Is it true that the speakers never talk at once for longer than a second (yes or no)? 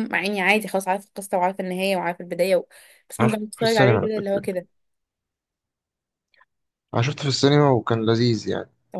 no